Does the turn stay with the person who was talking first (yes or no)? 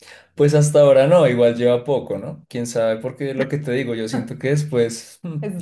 yes